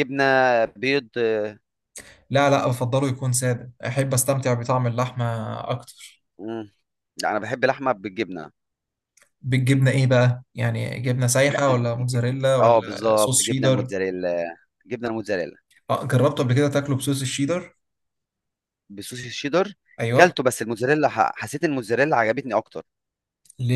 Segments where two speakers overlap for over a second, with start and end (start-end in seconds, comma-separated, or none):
12.6-13.9